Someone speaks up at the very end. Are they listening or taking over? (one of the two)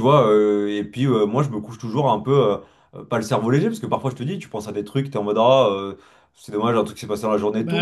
taking over